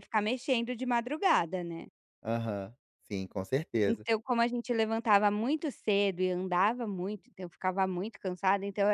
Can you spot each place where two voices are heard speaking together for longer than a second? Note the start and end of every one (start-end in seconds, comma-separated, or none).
none